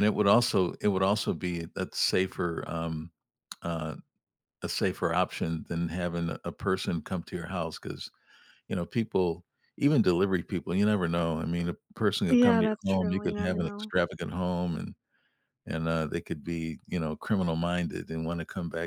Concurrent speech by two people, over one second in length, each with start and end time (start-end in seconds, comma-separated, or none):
12.3-13.9